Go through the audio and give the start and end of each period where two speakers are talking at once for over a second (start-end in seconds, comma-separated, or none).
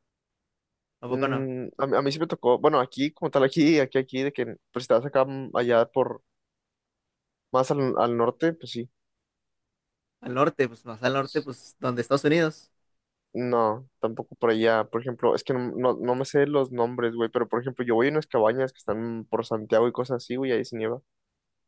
none